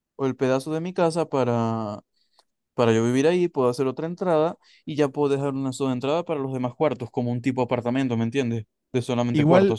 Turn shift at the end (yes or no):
yes